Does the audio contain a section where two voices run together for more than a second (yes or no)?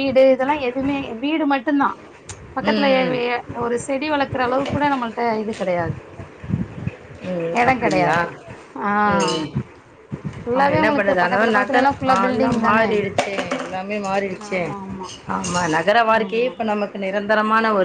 yes